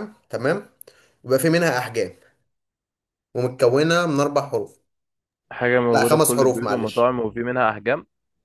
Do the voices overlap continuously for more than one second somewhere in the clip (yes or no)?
yes